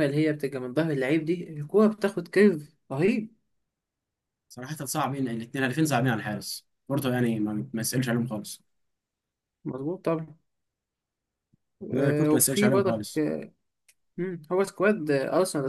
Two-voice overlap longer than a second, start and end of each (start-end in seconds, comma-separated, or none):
11.9-13.2